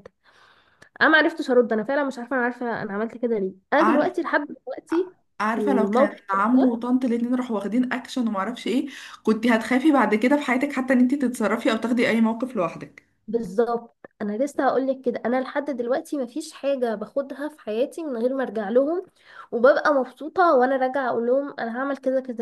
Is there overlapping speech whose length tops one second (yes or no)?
yes